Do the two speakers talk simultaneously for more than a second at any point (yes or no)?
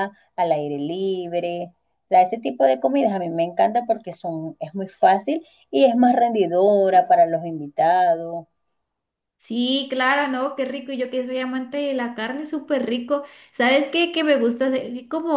no